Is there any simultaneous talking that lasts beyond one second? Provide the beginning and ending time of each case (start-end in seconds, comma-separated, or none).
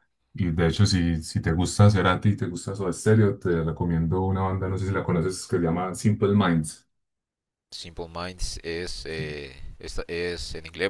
none